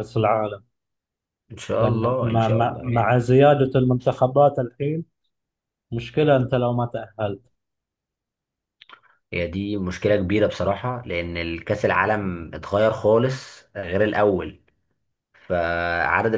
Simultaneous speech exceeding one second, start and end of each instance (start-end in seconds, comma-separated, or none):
1.8-3.2